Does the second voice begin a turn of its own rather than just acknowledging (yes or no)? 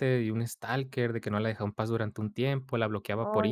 no